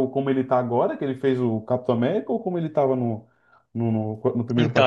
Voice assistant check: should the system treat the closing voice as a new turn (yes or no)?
yes